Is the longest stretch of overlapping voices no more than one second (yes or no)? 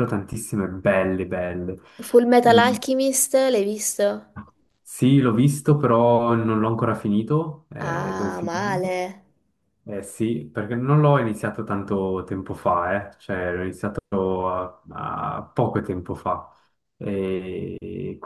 no